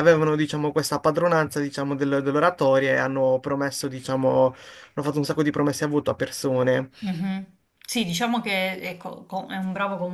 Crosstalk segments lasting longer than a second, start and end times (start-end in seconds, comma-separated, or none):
none